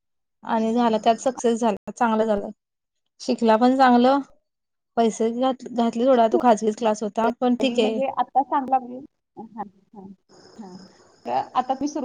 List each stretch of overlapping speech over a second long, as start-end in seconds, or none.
none